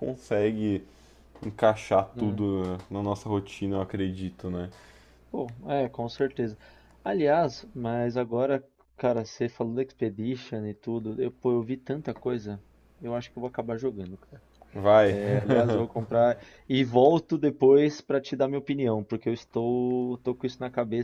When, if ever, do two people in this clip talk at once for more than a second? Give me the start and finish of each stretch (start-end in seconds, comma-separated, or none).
none